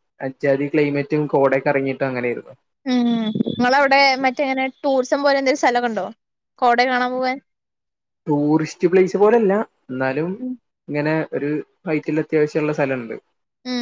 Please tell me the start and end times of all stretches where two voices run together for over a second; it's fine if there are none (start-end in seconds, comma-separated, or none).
none